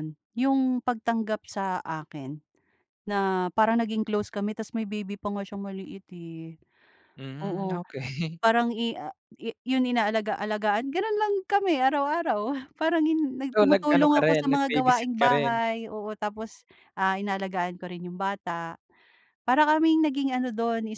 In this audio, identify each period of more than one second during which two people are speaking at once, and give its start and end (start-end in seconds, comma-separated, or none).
13.6-15.5